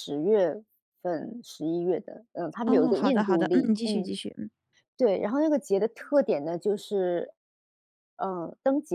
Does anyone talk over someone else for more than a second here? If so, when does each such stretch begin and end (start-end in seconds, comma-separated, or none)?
2.7-4.1